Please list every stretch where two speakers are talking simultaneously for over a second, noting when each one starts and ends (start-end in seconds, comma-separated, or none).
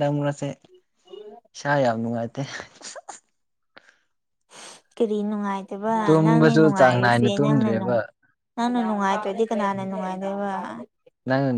6.0-7.9